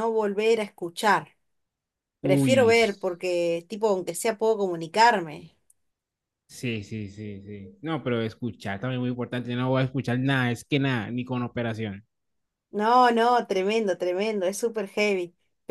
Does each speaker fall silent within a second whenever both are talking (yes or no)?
yes